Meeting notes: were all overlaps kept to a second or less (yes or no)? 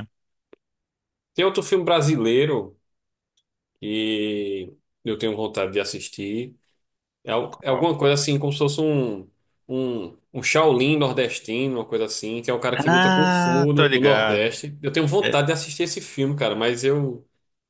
no